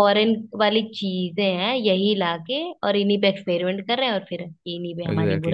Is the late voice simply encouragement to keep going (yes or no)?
no